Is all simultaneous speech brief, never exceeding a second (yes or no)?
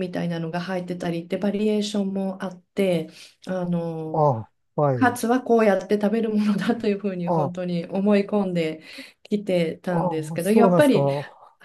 no